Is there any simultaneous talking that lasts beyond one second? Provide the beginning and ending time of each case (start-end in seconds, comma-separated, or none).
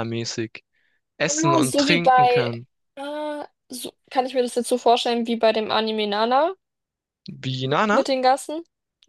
1.3-2.5